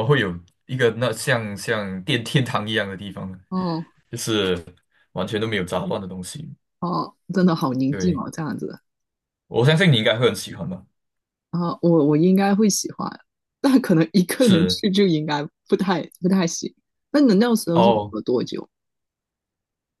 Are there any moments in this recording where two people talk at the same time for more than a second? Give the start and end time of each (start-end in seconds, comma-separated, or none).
none